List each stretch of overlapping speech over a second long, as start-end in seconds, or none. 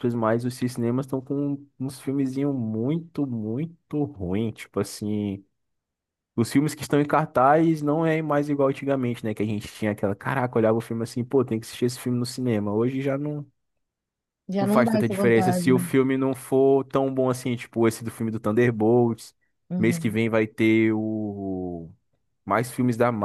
14.6-15.8